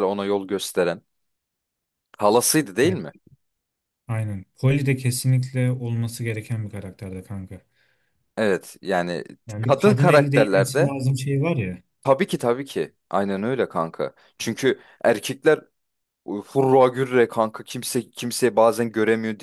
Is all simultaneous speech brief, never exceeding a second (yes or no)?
no